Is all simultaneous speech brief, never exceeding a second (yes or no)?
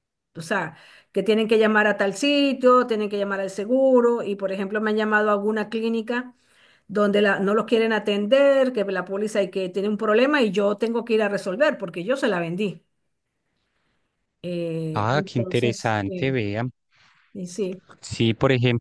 no